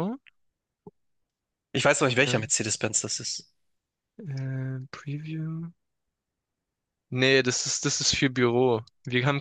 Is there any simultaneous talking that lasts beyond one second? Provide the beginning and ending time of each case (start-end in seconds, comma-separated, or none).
none